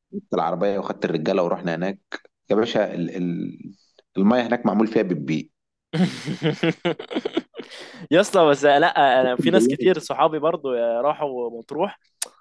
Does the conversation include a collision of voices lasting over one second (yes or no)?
no